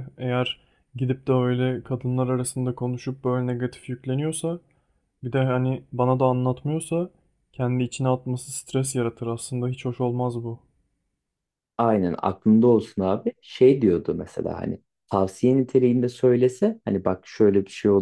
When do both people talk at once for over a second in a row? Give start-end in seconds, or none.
none